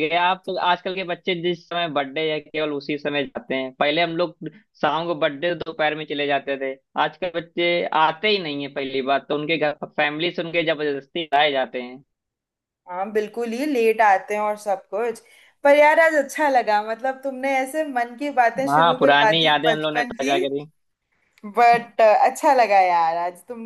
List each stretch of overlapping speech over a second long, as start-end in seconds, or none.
18.7-20.4